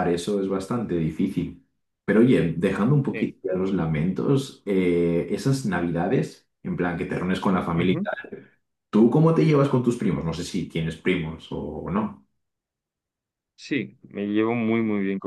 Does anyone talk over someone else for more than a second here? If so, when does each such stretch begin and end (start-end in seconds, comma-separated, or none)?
none